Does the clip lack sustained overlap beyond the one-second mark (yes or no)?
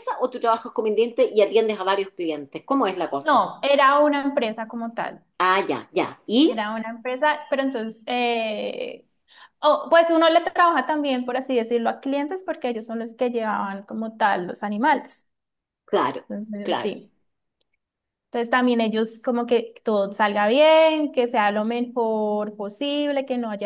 yes